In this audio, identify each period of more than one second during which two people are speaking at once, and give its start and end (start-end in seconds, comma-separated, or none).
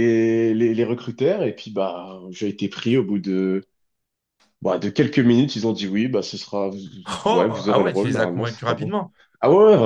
7.3-8.9